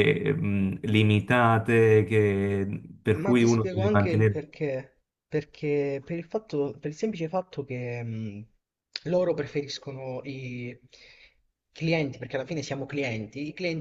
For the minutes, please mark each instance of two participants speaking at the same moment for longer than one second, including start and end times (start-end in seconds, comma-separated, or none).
3.1-4.5